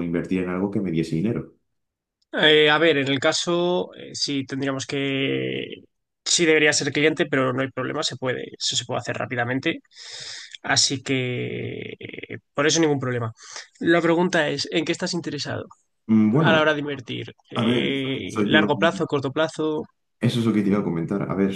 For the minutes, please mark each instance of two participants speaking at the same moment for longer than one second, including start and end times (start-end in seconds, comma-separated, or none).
17.6-19.0